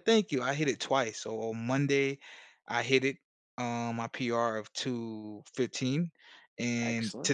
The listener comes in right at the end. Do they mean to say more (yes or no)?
no